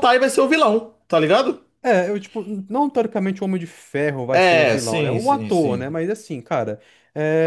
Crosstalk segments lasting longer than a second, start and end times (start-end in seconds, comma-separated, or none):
4.3-6.0